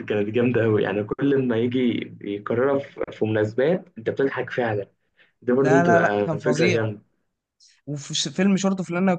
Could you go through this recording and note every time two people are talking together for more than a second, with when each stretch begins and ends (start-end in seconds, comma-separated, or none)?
5.6-6.8